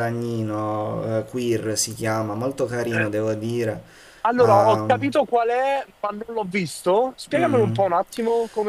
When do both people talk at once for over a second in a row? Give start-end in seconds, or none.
none